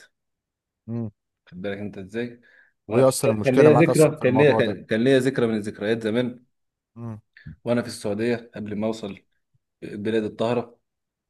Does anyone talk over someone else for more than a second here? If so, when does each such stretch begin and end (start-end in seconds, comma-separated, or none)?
2.9-4.8